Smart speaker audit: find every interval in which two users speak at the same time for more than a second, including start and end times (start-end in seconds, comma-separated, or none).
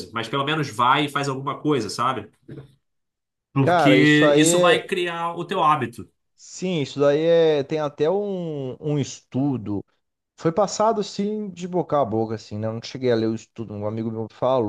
3.6-4.9